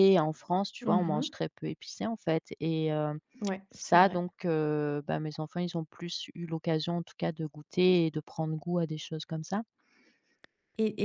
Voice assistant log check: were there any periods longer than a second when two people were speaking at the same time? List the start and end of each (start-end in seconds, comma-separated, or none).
none